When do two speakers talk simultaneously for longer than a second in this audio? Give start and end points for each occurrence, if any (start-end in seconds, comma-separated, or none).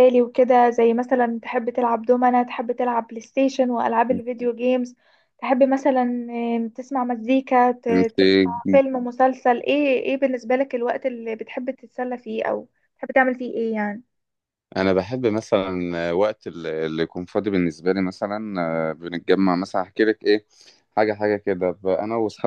none